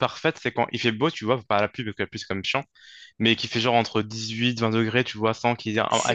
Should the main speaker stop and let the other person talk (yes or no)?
no